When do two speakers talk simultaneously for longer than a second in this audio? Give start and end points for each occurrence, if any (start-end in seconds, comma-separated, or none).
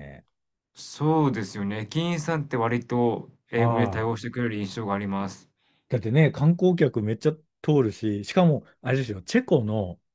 none